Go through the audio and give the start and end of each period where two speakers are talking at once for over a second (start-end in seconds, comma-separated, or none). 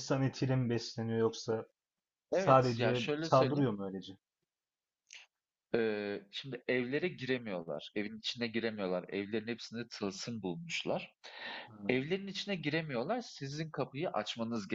2.3-3.7